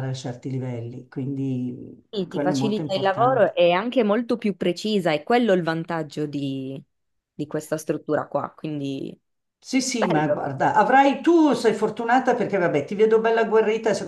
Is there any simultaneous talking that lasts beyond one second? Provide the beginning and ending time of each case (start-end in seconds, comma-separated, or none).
2.1-3.5